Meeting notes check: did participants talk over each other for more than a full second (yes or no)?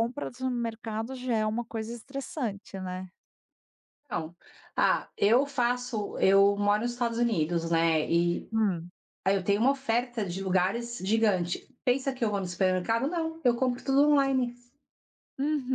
no